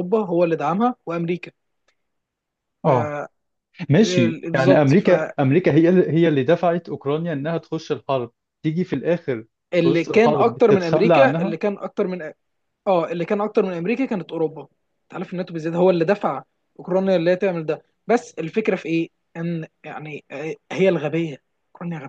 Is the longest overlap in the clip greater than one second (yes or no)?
yes